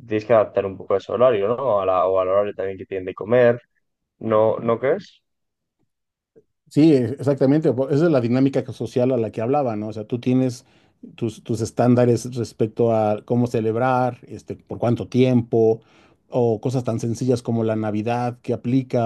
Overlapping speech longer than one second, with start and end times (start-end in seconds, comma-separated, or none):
none